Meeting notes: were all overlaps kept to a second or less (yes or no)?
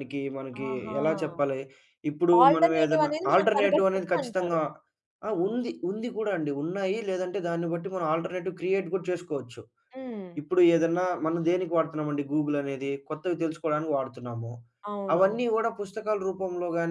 no